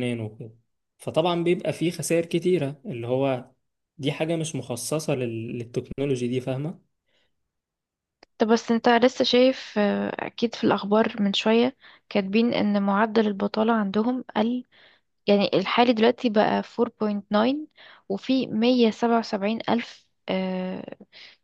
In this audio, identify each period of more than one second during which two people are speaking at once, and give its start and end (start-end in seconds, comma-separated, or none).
none